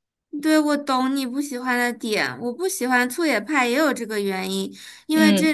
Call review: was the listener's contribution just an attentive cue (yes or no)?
yes